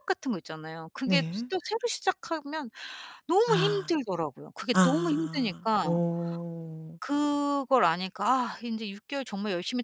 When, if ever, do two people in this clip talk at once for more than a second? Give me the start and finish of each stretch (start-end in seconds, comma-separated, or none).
4.7-6.0